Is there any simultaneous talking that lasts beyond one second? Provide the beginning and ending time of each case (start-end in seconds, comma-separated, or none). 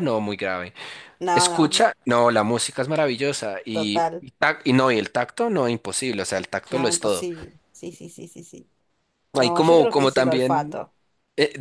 9.4-10.8